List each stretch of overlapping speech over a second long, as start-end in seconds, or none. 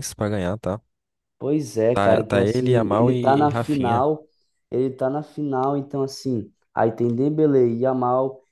1.9-4.0